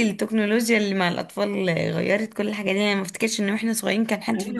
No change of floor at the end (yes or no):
no